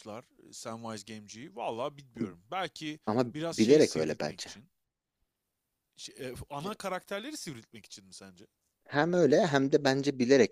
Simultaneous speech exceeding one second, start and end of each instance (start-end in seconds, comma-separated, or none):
3.0-4.5